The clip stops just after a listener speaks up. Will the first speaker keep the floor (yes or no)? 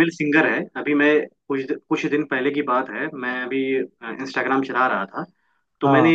yes